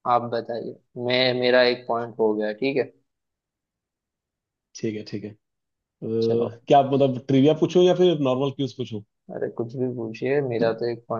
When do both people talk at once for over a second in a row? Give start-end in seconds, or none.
none